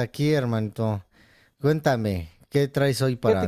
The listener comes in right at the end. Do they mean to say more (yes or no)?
yes